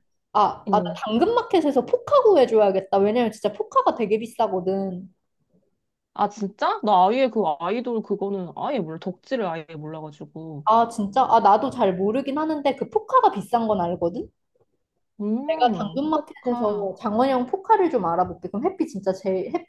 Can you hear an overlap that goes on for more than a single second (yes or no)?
yes